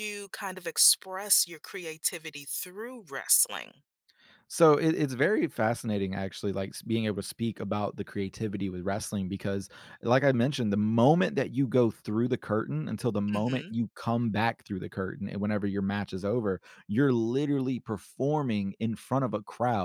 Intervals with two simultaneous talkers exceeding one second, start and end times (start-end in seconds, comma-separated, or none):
none